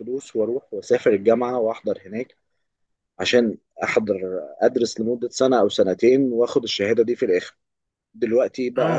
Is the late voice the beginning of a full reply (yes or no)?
no